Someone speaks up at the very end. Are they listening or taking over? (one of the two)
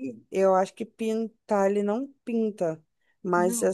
listening